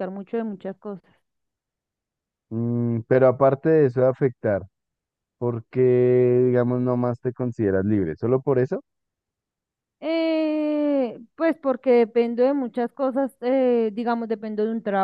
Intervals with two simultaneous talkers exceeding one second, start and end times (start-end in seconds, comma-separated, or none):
none